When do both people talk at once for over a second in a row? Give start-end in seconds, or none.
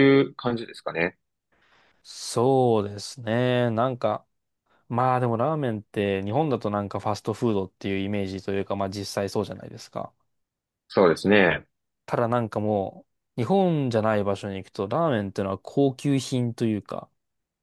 none